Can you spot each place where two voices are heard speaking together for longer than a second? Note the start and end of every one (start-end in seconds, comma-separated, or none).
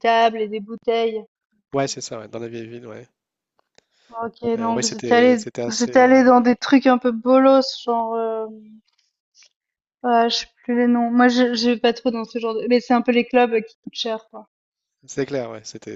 4.6-6.1